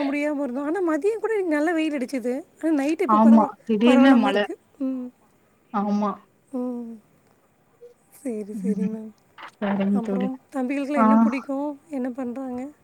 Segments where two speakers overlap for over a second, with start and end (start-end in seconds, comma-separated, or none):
none